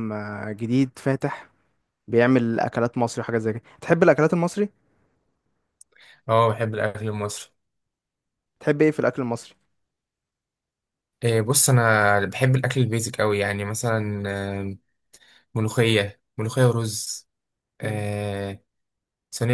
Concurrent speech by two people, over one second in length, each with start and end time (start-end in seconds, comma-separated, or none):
none